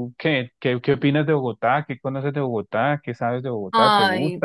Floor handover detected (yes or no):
yes